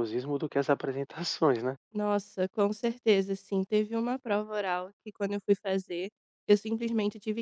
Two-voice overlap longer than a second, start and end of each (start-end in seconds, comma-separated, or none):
none